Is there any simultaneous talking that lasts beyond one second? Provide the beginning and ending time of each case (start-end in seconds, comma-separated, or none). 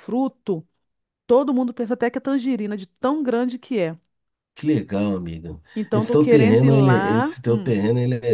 5.7-7.7